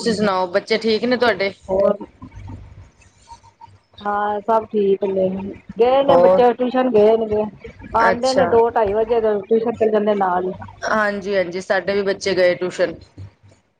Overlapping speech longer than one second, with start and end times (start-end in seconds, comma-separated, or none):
none